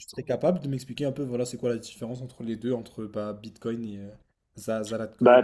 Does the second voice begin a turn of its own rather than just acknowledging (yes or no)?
yes